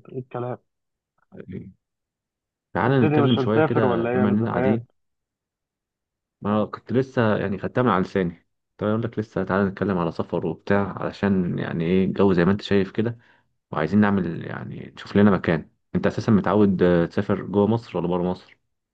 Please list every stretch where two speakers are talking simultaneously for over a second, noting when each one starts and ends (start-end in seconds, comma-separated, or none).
2.8-4.8